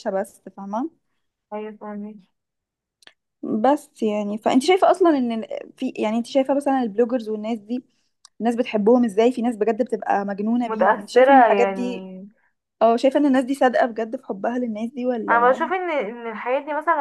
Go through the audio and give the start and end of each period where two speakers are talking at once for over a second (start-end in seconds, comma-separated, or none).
10.6-12.1